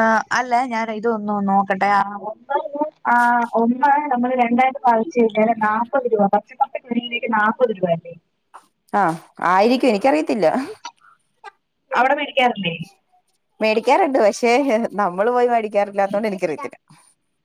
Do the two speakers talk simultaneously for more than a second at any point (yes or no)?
no